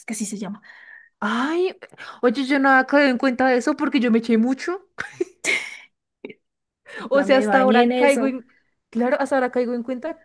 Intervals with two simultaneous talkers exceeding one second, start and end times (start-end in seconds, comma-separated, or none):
7.1-8.3